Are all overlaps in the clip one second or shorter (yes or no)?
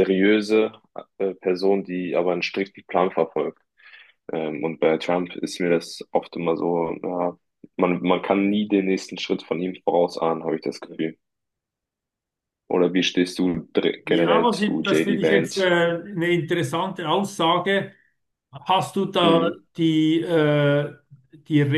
no